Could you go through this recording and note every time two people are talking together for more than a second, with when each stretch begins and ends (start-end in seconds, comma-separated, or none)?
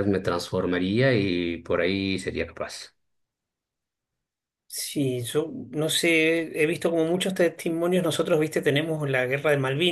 none